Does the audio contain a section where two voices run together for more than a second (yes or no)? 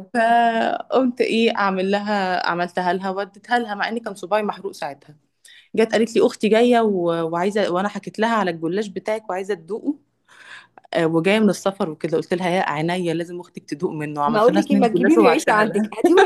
yes